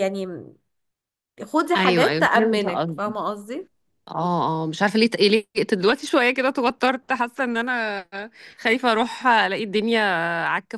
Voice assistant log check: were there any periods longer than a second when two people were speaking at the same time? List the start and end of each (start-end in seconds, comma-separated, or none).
1.8-3.1